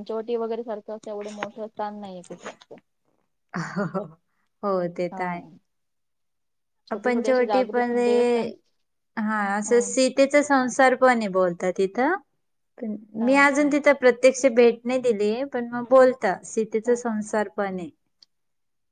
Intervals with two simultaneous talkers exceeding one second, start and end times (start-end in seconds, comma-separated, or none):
7.0-8.4